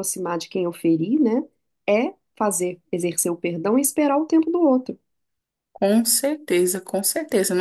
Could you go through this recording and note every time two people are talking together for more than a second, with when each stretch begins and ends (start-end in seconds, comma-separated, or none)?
none